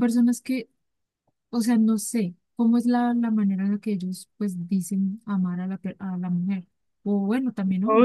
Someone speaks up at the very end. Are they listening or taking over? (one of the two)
taking over